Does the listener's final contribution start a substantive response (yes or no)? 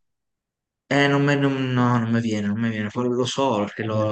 no